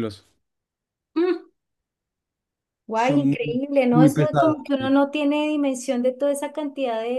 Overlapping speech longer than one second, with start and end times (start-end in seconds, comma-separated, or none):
2.9-4.9